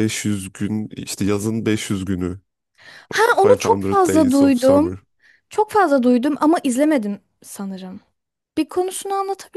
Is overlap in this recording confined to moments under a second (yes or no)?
no